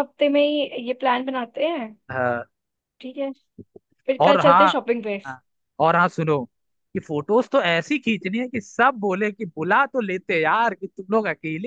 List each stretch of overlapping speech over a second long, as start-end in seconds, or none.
none